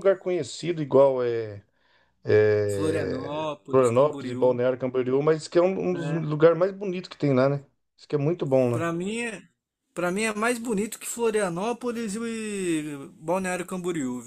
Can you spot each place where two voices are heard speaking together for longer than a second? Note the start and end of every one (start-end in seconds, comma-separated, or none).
2.7-4.5